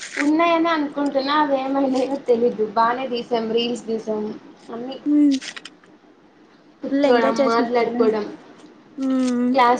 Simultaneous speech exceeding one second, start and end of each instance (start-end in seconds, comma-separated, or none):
6.9-8.2